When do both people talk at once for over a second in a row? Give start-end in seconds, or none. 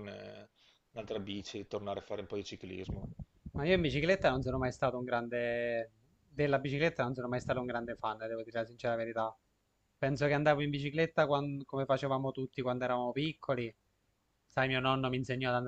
none